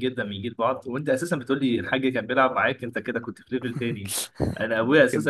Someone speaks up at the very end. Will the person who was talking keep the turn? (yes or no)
yes